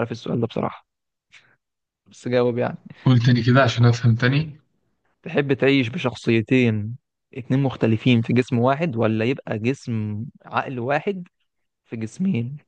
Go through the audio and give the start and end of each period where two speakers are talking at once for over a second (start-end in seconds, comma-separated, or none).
none